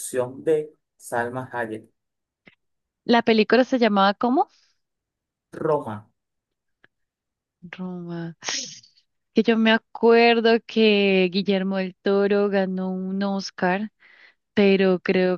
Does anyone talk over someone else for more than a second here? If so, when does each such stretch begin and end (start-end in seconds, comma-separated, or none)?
none